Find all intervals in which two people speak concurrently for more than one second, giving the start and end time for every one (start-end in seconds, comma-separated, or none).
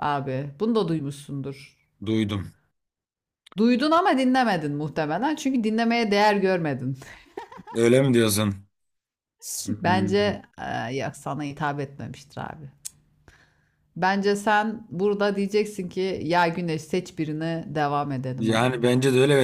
none